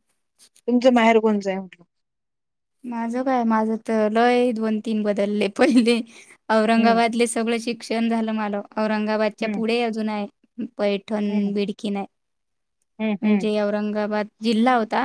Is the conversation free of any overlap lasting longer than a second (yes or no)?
yes